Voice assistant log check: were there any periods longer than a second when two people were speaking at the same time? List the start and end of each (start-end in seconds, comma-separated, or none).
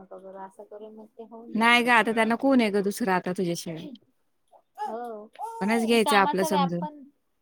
5.6-6.8